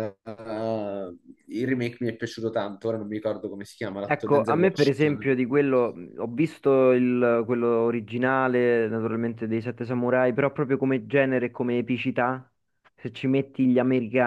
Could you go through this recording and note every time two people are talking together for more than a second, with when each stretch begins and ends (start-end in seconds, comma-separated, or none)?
4.1-5.4